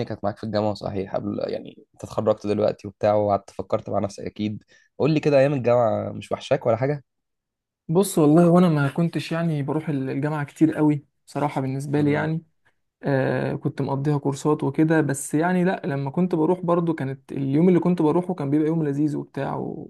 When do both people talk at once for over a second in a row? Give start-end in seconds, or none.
none